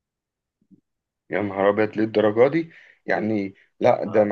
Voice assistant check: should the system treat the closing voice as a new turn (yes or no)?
no